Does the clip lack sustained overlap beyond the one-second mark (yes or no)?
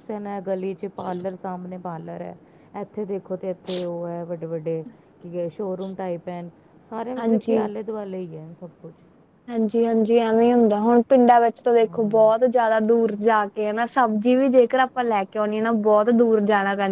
yes